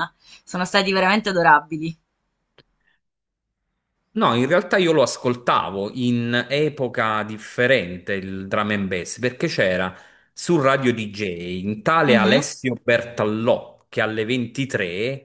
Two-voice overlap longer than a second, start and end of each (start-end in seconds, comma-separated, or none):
none